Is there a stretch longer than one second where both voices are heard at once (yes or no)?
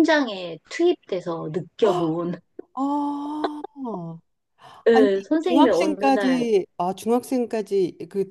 yes